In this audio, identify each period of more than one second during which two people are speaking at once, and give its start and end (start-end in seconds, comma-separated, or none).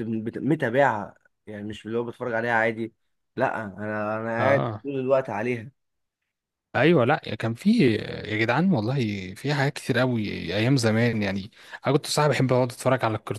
none